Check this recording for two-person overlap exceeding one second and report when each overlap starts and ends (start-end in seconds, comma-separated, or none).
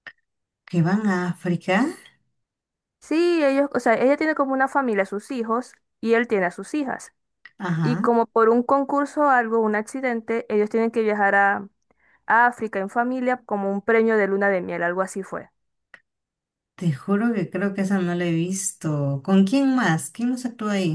none